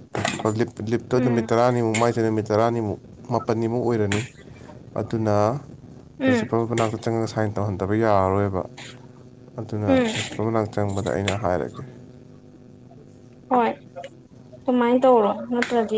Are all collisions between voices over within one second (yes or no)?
yes